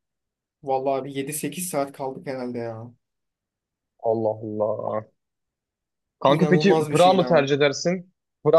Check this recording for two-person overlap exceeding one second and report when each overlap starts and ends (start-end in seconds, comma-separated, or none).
6.3-7.5